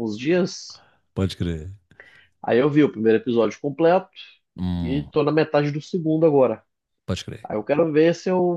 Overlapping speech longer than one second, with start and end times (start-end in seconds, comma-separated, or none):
none